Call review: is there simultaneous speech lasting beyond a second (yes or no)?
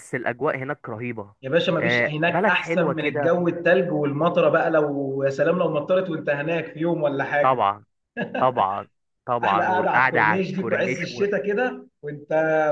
yes